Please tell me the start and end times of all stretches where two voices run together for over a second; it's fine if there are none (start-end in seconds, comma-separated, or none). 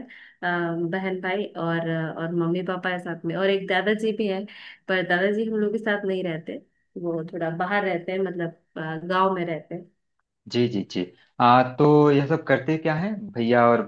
none